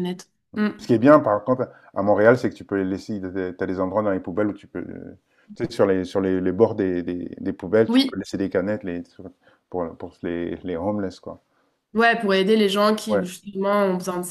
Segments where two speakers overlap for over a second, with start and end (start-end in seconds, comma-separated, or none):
none